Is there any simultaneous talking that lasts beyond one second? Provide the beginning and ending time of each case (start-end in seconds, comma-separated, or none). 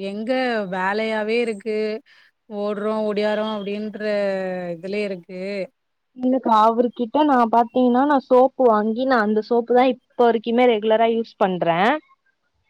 none